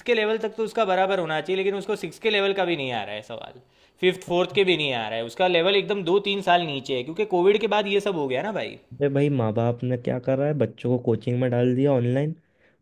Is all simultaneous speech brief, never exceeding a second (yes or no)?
yes